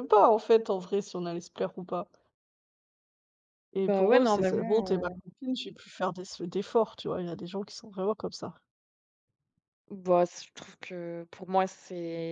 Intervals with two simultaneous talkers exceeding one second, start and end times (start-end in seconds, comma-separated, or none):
3.8-5.2